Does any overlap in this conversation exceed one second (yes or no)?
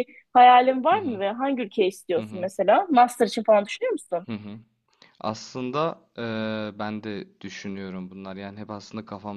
no